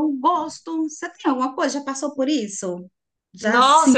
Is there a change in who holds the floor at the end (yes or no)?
yes